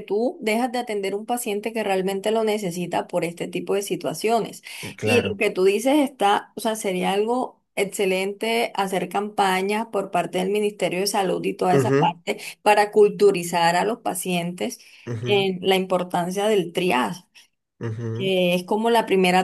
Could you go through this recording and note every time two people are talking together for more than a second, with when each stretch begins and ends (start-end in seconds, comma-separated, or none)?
none